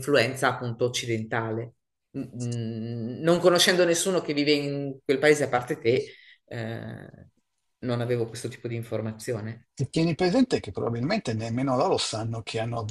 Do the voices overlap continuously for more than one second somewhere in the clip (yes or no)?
no